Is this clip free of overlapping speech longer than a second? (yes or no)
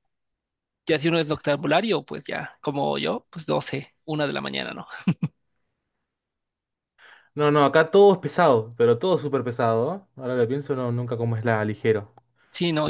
yes